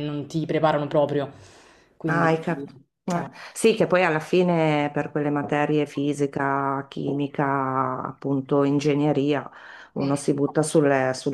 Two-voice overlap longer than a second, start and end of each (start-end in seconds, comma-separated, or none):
none